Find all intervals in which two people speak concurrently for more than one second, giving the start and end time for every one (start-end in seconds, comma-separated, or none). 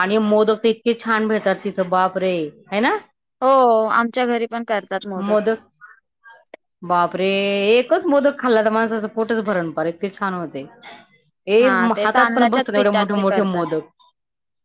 11.6-13.6